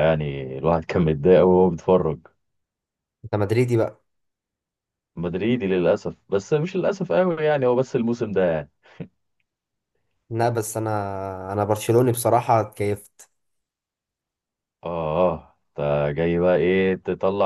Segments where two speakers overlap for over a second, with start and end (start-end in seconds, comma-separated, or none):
none